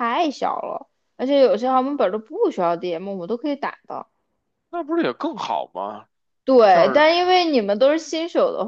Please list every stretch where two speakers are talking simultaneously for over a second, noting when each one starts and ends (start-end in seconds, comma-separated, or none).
none